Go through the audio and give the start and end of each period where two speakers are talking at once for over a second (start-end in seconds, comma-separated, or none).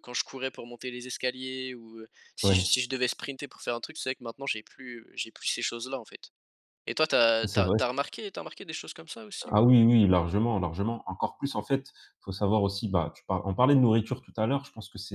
none